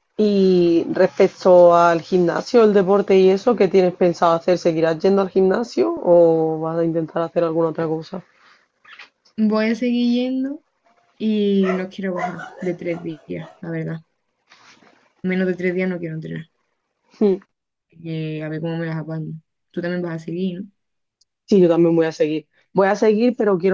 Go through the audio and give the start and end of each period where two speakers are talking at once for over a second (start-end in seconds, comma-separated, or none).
none